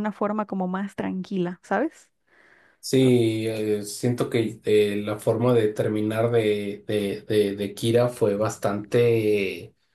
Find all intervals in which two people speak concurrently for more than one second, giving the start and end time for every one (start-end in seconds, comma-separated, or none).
none